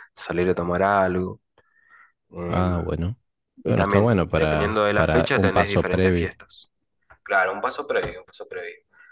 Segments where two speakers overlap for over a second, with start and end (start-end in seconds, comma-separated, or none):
3.6-6.3